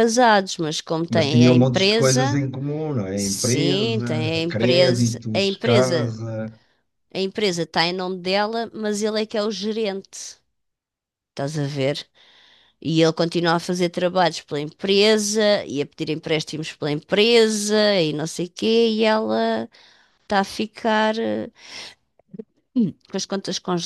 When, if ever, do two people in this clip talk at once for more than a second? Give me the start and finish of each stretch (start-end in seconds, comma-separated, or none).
1.1-2.4, 3.1-6.1